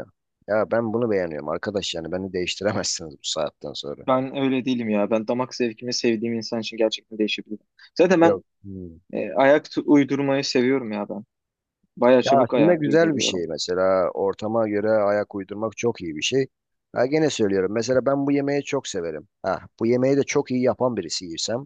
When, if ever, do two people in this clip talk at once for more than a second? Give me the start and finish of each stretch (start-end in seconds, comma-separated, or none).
12.2-13.5